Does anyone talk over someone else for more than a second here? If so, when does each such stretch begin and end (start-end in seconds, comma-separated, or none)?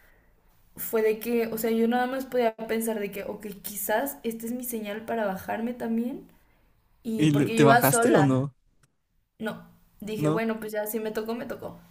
7.2-8.4